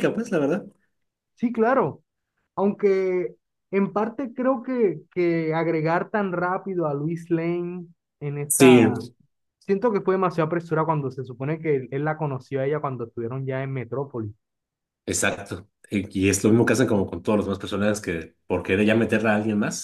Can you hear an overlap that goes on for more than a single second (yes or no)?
no